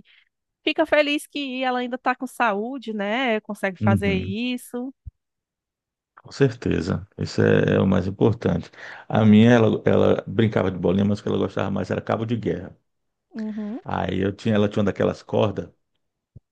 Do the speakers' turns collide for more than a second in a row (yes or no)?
no